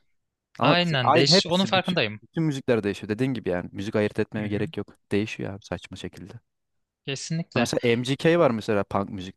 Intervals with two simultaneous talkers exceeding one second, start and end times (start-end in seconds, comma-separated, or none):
0.6-2.2